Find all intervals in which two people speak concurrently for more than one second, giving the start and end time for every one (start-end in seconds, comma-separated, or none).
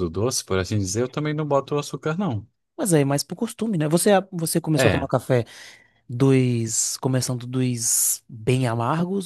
none